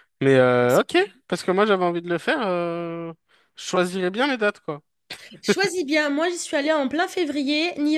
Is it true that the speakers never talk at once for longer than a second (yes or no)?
yes